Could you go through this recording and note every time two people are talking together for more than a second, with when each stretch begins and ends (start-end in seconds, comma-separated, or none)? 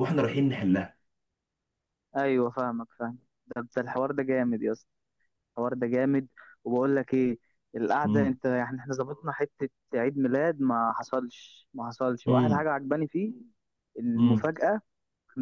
none